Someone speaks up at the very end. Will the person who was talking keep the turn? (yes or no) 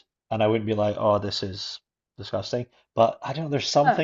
yes